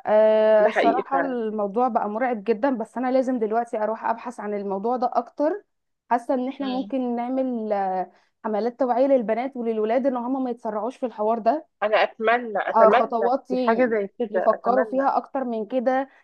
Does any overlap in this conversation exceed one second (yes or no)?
yes